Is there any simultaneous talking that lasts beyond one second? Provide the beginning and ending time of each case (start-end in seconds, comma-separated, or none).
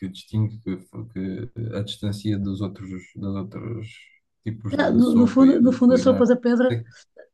4.8-6.8